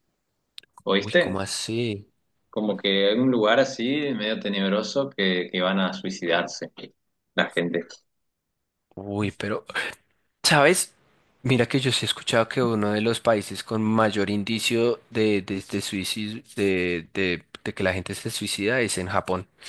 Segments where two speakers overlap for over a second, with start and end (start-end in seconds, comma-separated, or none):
none